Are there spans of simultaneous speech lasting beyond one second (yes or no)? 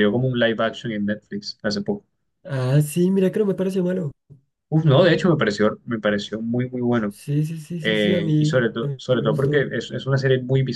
yes